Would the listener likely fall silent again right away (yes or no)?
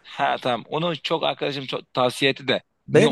no